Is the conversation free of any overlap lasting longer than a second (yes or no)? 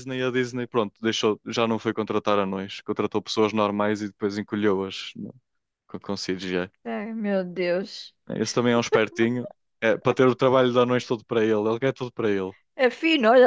yes